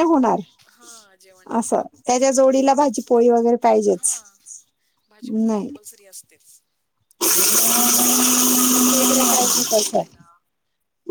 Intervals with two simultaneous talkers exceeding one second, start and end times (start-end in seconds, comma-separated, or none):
none